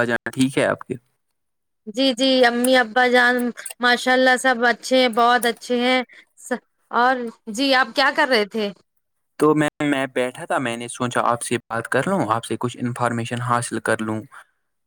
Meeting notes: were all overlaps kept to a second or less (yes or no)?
yes